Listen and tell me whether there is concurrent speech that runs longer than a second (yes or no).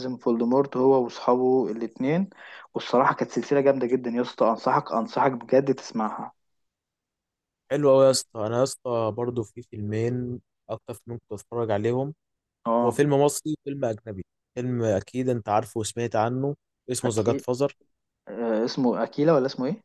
no